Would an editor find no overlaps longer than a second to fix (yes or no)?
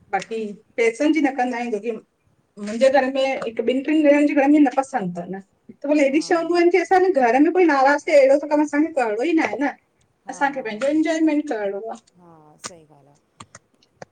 yes